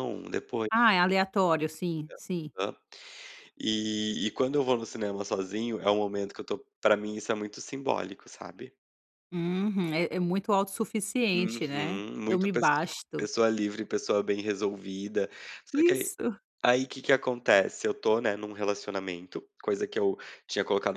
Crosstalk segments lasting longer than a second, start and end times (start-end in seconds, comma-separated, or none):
11.3-13.3